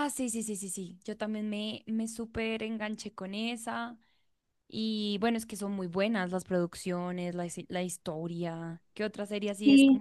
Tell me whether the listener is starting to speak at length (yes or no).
yes